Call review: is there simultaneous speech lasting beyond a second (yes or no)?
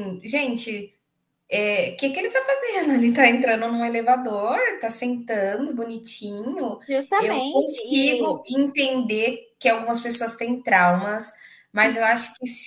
yes